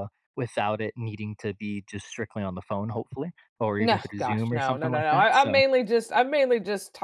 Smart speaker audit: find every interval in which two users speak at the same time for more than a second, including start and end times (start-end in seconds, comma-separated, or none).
3.8-5.6